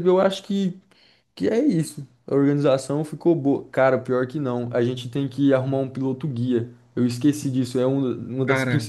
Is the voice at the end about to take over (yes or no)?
no